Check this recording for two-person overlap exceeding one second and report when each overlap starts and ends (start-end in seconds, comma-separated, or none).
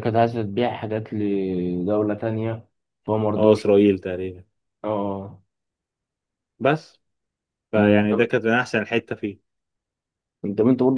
none